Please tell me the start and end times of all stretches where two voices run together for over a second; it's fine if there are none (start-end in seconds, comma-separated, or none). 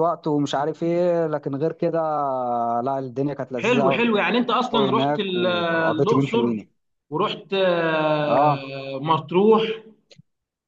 4.7-6.5